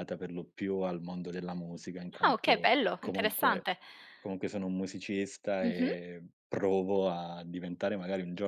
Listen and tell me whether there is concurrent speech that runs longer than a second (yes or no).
yes